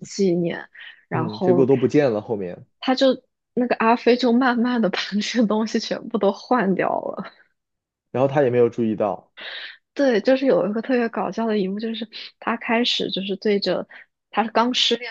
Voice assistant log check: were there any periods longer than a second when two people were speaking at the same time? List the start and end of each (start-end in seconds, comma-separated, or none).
none